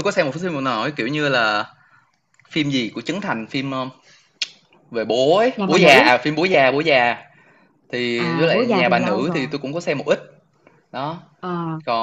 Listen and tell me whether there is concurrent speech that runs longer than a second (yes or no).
yes